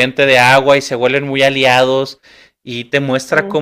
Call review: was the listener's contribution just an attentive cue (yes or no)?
yes